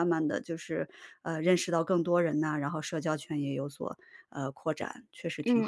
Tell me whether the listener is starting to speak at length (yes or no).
yes